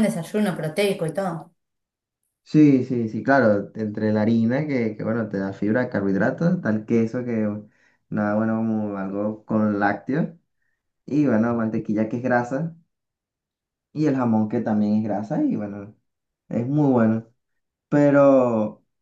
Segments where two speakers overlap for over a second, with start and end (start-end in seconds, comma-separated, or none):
none